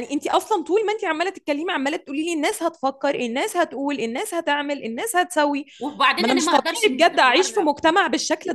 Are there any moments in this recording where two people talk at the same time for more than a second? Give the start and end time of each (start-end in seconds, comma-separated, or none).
6.2-7.7